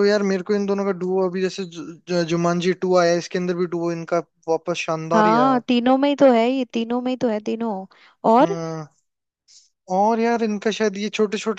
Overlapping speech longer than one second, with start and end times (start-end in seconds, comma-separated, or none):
none